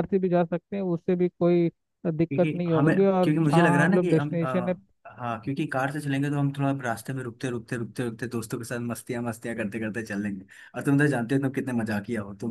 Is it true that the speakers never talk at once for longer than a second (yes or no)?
no